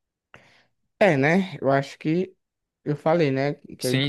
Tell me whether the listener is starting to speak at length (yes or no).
yes